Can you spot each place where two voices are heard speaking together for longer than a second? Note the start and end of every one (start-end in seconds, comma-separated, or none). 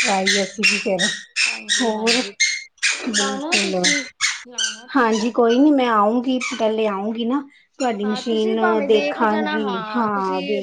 8.0-9.6